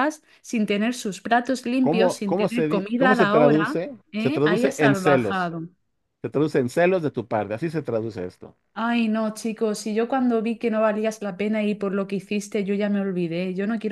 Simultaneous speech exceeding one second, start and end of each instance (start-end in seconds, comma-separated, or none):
1.8-5.5